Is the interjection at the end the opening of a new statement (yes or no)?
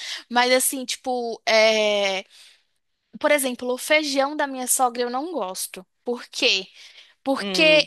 no